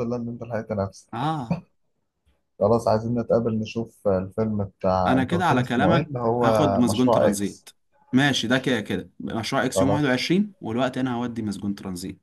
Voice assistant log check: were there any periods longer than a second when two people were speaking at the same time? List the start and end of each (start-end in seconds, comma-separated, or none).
5.1-7.7